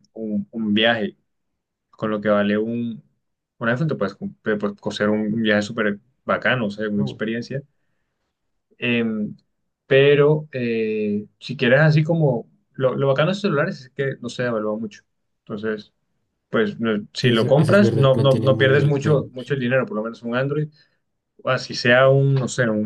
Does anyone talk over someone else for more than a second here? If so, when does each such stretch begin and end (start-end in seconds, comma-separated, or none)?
17.2-19.3